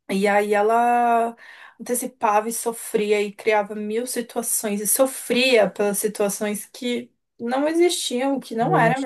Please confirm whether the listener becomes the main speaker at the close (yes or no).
no